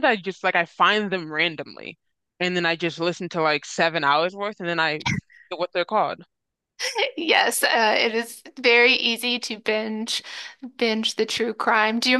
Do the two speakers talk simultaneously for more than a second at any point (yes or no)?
no